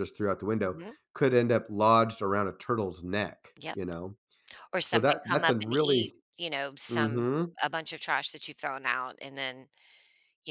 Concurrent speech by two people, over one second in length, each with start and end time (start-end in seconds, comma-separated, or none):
4.9-6.1